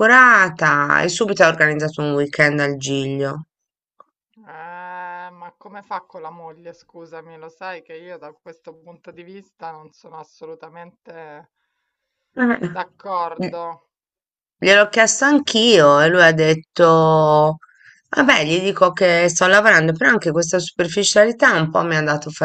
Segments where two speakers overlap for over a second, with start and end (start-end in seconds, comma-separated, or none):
none